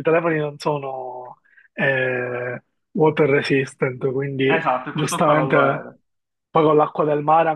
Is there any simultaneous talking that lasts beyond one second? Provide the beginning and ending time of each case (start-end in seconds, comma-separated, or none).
4.5-5.9